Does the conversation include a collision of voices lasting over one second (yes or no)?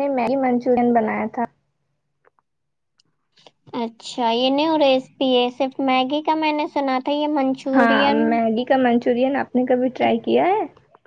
no